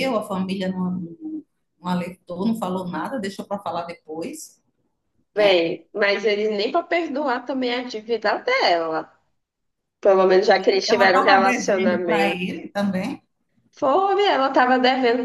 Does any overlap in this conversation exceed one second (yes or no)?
yes